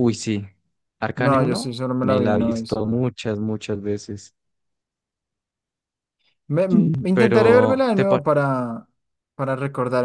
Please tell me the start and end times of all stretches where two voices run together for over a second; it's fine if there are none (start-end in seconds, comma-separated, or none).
1.1-2.8, 6.7-8.2